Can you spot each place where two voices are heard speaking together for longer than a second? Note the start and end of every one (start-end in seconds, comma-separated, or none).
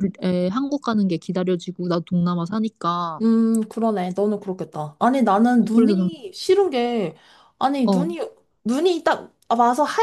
none